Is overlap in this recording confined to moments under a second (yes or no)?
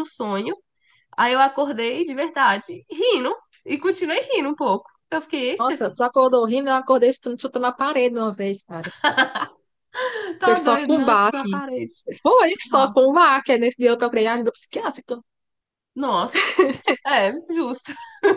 no